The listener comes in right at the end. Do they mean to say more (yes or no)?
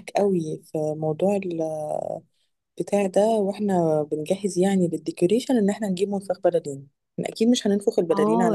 yes